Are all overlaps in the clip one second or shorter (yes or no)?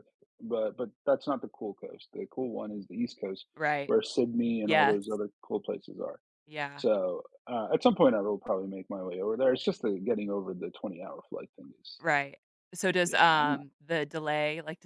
yes